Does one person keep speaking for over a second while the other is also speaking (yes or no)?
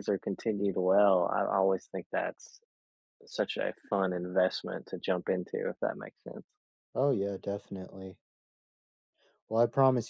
no